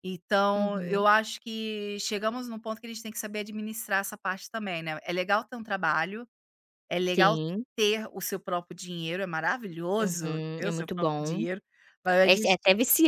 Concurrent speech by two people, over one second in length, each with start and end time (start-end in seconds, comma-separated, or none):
10.0-11.4